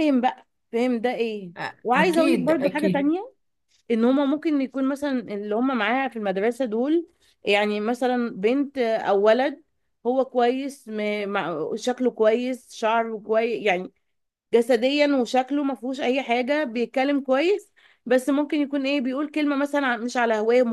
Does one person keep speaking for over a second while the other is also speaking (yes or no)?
yes